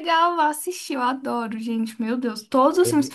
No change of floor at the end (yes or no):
yes